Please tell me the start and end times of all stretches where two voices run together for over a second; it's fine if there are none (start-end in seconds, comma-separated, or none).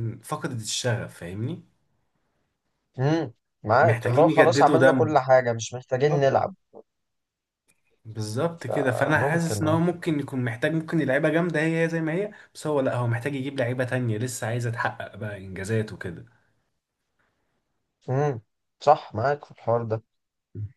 3.8-5.1, 8.6-9.8